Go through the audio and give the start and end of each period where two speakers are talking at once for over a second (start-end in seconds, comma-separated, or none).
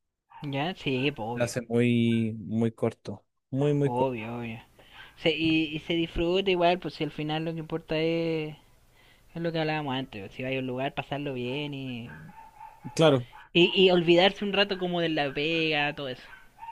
none